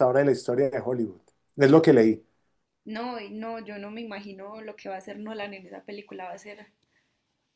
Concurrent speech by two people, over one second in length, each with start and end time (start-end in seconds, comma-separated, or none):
none